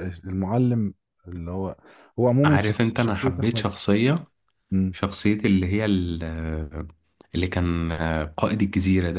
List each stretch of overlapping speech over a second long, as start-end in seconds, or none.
2.5-3.7